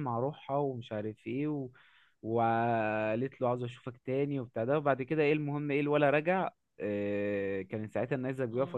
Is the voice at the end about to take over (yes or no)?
no